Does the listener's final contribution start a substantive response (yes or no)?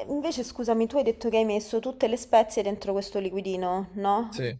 no